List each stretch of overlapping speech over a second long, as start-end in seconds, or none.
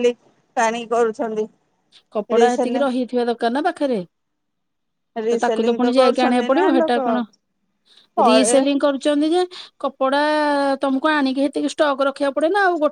5.3-7.0